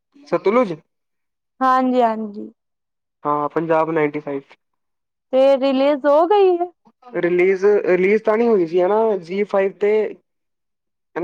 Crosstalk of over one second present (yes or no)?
no